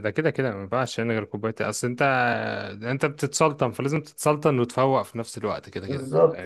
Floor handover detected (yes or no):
yes